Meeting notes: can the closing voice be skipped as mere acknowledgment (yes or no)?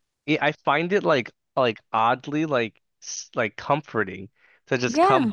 yes